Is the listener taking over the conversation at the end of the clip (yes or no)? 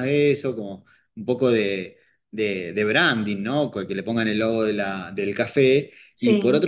no